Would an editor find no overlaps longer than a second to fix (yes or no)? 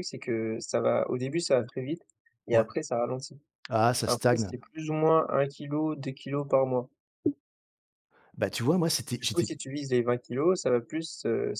yes